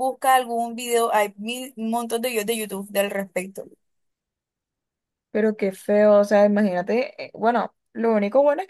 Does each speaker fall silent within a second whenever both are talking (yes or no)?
yes